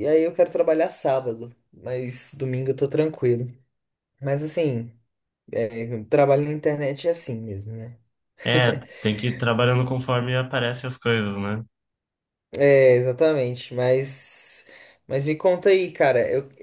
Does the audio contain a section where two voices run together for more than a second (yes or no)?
no